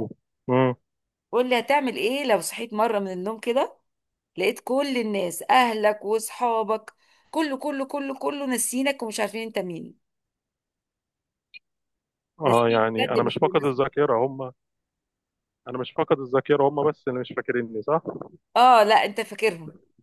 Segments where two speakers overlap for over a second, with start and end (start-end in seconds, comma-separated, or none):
12.4-14.1